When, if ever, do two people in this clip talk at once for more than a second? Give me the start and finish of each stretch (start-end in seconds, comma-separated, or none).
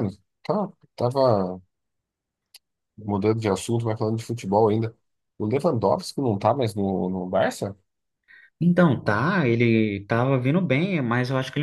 none